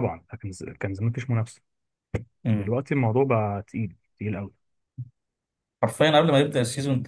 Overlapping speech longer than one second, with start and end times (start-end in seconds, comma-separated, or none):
none